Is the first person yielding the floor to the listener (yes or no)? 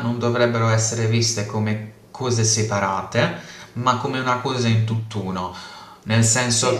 no